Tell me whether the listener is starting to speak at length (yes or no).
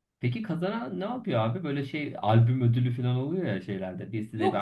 yes